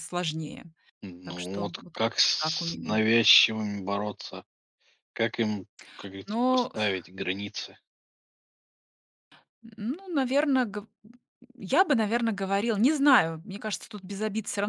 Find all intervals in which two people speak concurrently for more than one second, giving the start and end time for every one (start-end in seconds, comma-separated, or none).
1.2-3.0